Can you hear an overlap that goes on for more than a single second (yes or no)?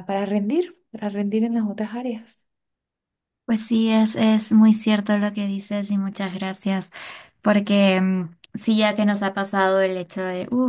no